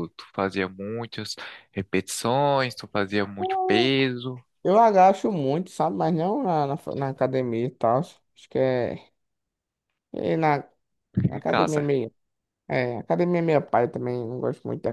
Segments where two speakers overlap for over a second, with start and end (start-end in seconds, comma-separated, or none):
none